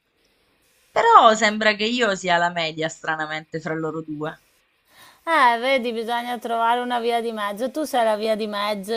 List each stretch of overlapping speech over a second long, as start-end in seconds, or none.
none